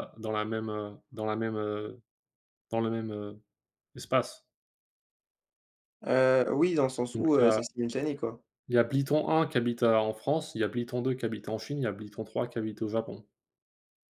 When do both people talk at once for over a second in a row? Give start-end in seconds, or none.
none